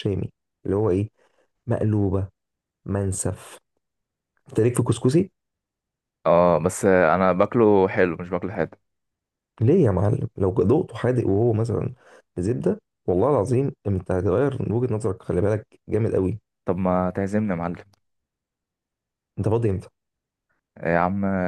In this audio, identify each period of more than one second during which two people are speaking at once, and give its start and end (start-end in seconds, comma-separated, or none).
none